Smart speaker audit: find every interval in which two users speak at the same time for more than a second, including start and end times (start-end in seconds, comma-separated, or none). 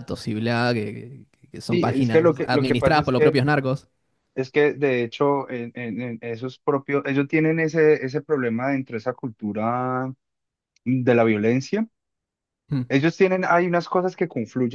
1.7-3.4